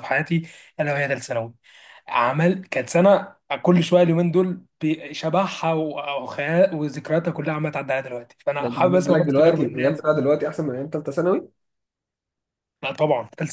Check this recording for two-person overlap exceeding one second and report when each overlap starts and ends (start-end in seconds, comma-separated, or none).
8.6-10.1